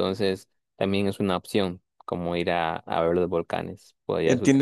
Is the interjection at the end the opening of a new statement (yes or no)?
yes